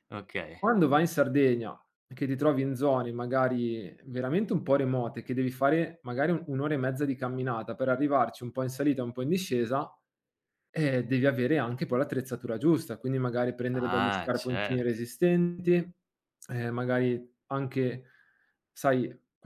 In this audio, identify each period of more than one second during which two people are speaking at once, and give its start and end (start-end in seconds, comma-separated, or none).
13.7-15.0